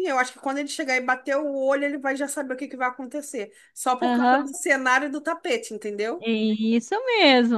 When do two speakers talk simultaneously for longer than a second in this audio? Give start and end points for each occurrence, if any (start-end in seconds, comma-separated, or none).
none